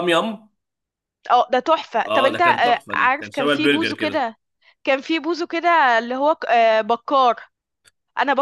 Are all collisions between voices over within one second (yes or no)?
no